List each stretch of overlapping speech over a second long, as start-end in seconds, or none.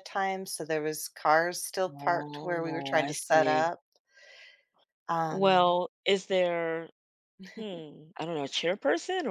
1.9-3.7